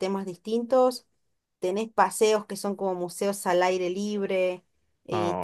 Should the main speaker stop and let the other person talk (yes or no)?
no